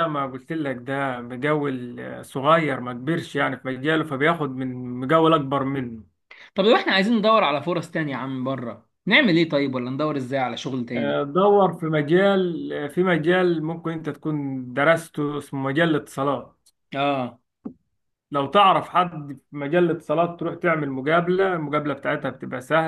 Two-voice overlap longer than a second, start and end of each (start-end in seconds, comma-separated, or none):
none